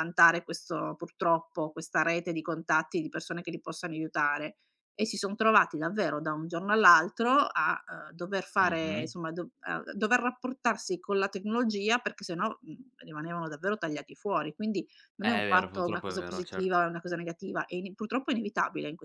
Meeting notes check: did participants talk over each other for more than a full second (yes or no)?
yes